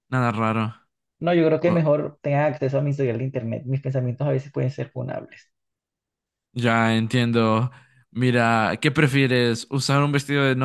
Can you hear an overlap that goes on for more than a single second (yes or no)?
no